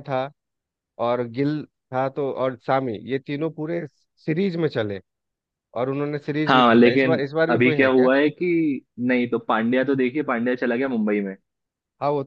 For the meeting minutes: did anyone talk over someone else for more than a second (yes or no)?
yes